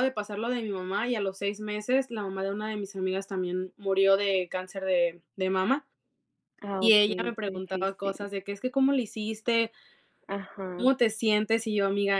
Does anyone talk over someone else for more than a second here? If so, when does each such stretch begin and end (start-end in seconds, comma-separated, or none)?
6.8-8.3